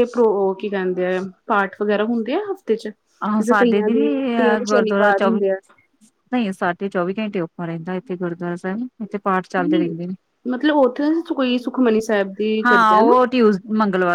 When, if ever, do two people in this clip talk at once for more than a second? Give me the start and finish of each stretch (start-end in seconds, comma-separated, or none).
3.2-5.2